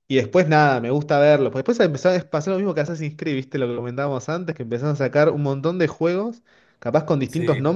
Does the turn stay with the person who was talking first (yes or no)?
yes